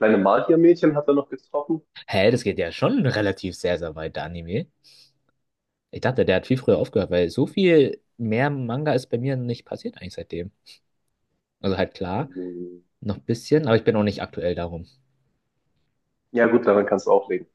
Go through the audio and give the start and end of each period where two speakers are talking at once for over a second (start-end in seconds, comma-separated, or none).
none